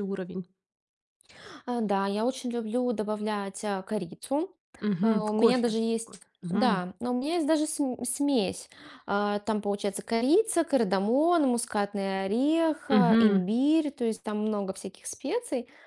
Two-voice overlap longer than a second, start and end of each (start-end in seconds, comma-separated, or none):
5.0-6.8